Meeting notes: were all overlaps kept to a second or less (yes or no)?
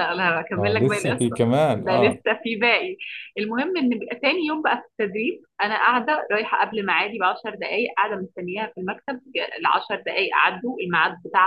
no